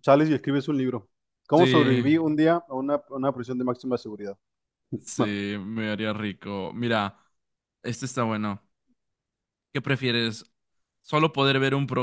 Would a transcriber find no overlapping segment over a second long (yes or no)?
yes